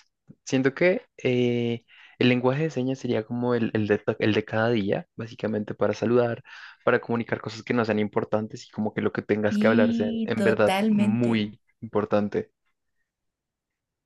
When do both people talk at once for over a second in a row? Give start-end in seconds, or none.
9.5-11.5